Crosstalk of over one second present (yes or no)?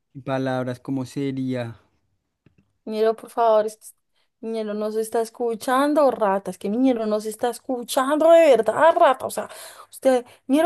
no